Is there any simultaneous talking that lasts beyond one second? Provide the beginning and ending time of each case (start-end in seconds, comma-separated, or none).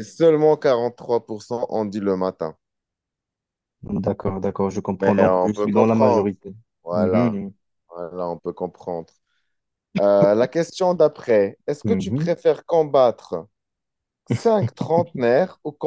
5.0-6.3